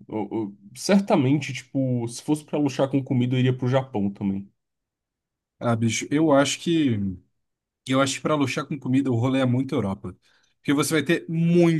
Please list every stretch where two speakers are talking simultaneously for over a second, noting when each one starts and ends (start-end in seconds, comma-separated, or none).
none